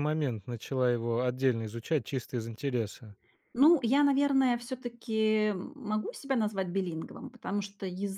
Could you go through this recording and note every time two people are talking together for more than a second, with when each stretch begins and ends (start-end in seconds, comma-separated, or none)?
none